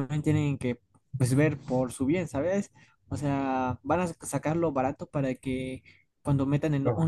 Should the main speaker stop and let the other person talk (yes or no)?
no